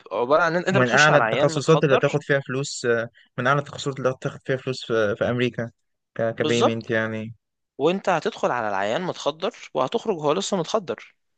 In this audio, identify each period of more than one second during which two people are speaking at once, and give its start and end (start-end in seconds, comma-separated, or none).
0.7-2.2